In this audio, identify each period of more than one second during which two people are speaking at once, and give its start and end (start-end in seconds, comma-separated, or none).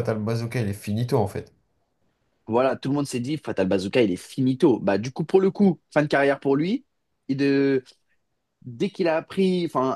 none